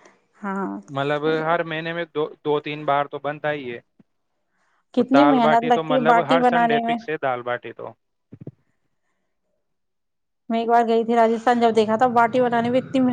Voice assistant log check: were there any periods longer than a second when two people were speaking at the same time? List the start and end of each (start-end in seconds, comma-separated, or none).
5.0-7.0